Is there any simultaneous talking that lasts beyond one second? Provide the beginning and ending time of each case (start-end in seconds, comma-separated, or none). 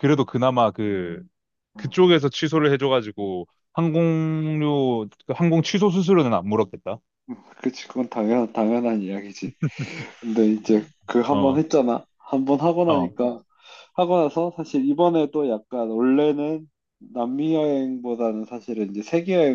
none